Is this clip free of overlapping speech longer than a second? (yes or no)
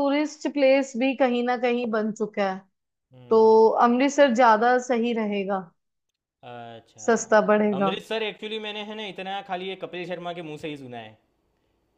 yes